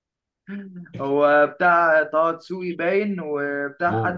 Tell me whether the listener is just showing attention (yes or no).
yes